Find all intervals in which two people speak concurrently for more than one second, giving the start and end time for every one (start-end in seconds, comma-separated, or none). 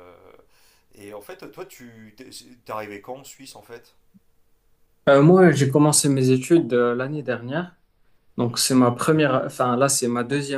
none